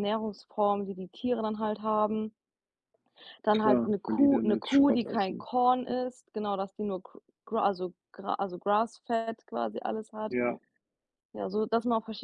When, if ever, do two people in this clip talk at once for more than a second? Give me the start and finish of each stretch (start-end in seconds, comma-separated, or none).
3.5-5.5